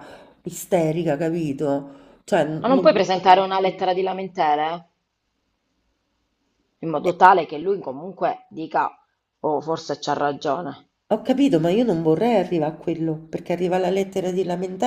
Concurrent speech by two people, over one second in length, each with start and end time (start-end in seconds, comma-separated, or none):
none